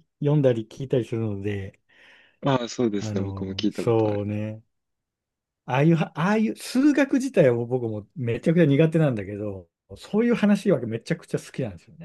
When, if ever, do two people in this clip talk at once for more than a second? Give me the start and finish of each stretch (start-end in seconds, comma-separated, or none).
3.0-4.2